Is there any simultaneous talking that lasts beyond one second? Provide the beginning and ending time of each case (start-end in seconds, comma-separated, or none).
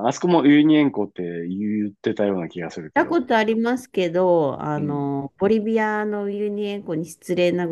none